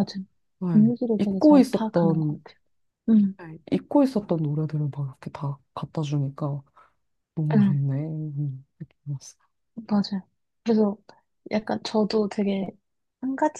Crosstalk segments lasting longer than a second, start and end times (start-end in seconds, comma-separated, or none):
0.7-2.4